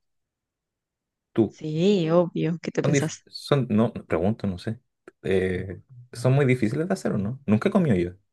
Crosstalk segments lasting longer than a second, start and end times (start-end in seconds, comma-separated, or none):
none